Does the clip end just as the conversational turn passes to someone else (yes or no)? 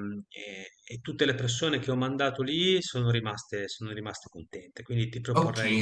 yes